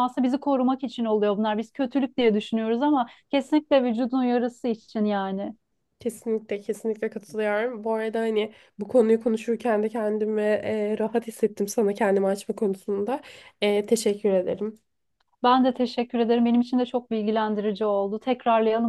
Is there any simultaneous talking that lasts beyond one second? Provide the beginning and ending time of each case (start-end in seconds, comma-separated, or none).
none